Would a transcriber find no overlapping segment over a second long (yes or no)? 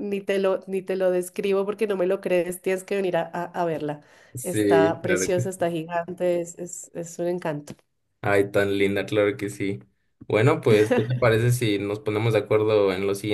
no